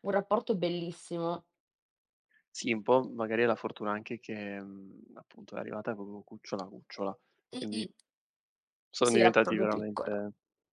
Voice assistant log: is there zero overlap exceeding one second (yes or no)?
no